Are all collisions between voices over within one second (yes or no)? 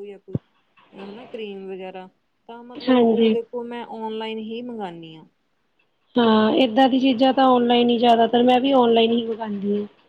yes